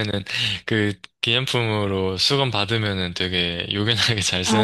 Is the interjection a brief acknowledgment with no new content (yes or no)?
yes